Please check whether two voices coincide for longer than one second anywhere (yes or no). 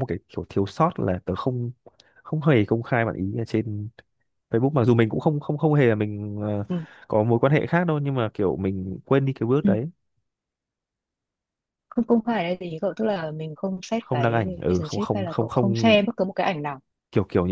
yes